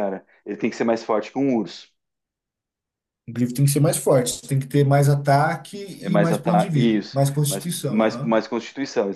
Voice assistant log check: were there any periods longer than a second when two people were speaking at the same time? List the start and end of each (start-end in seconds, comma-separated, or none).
6.0-8.3